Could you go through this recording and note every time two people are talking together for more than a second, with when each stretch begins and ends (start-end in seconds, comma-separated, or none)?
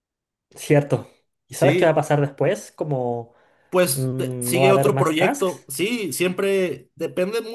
3.9-5.7